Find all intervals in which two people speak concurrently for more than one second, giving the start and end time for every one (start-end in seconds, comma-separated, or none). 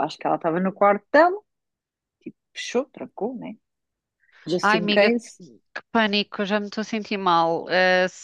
none